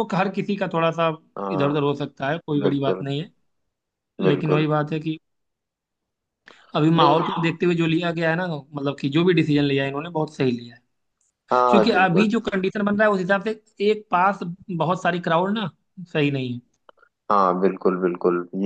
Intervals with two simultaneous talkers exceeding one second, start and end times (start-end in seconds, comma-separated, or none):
none